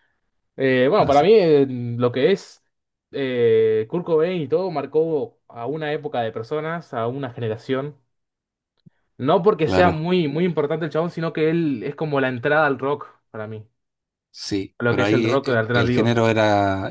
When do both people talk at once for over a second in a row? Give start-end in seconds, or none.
14.8-16.2